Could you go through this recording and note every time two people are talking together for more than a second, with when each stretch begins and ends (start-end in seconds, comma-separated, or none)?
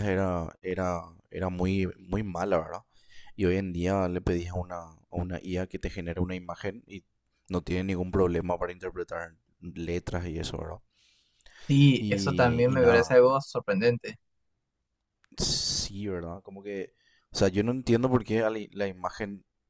12.0-13.2